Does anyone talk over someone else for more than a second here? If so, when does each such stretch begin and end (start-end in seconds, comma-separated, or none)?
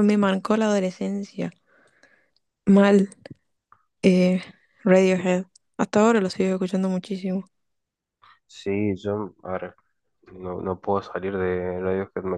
none